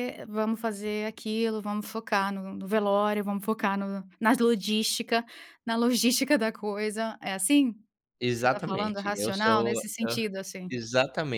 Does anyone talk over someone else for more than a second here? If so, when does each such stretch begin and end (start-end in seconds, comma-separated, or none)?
8.2-10.2